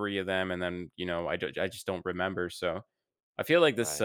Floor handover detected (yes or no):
no